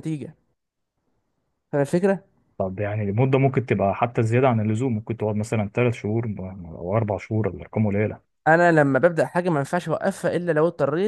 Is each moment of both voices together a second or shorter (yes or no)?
yes